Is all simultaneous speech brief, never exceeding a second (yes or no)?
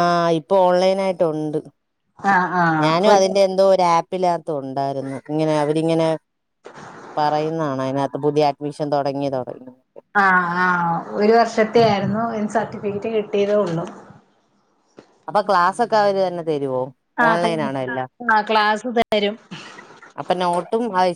yes